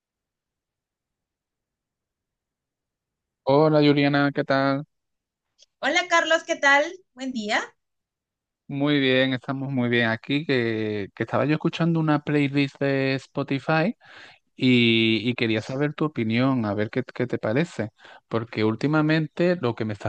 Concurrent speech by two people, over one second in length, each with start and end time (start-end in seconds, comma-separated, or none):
none